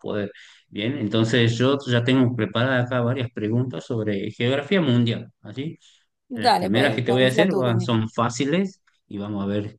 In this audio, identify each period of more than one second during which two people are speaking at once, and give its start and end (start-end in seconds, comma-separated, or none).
6.4-8.0